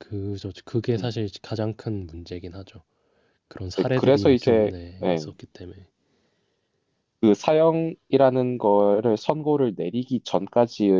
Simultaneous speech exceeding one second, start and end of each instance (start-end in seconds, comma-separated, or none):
3.8-5.3